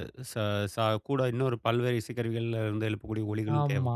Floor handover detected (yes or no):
yes